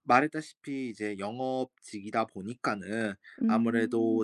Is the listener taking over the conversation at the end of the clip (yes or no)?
no